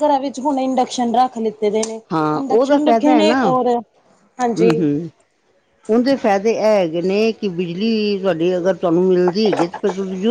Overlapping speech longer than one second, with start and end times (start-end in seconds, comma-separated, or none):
none